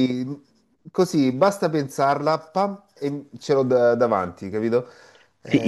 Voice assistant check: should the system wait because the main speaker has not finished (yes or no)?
no